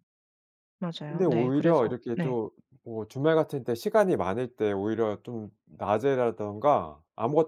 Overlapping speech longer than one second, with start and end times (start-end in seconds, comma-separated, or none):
1.1-2.4